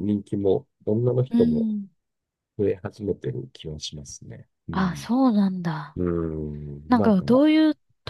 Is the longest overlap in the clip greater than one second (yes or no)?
no